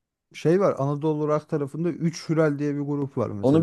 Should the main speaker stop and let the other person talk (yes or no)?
yes